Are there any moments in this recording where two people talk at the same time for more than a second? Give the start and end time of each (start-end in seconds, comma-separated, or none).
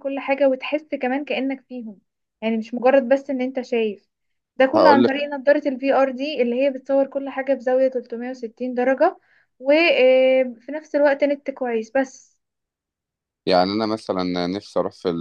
none